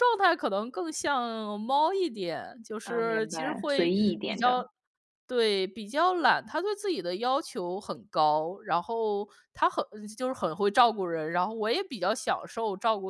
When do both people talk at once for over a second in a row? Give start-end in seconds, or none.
2.8-4.6